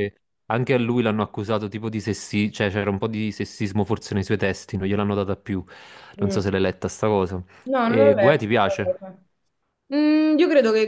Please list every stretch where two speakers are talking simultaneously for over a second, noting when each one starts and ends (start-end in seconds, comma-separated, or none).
7.8-9.1